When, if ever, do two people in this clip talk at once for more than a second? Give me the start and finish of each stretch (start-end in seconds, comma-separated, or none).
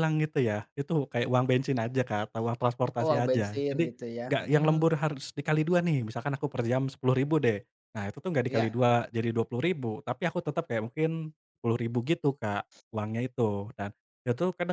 3.0-4.9